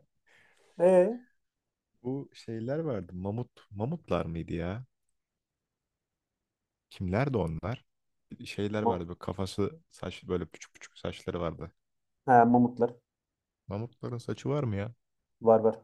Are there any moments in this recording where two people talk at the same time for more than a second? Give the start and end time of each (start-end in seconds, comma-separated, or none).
none